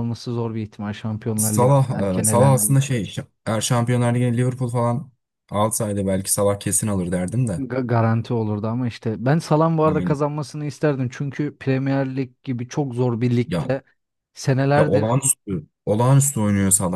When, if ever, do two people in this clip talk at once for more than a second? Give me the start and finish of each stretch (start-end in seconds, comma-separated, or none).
1.4-3.0